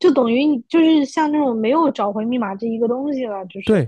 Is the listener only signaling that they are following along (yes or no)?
no